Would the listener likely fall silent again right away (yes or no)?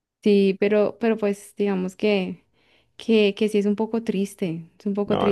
no